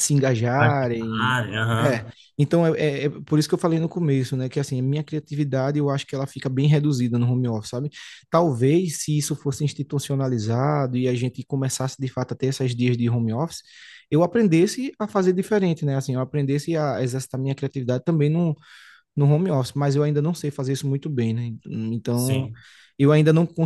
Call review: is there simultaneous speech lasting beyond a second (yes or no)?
yes